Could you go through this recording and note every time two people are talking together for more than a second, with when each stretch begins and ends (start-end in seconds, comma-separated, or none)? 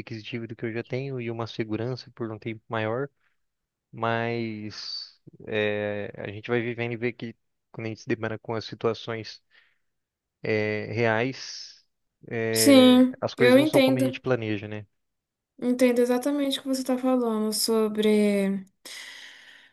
12.5-14.2